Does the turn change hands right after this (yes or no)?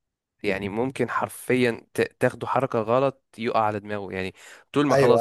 no